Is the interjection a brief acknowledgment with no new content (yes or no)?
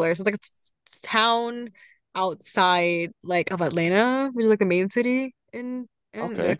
yes